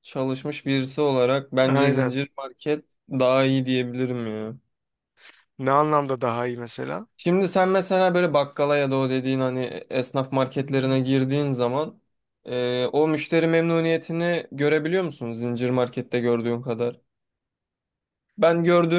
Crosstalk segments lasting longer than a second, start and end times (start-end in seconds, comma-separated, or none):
none